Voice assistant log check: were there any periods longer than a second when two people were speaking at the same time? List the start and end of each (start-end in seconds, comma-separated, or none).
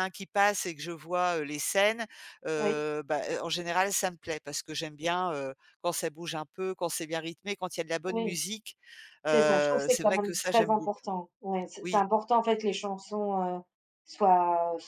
9.3-11.1